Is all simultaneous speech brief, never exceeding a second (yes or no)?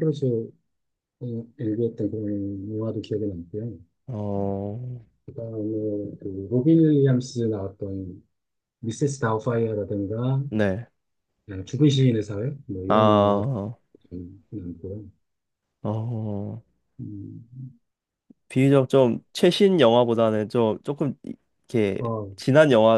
yes